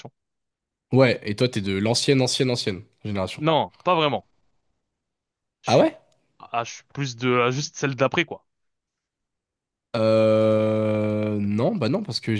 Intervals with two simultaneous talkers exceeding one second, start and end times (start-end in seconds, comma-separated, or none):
none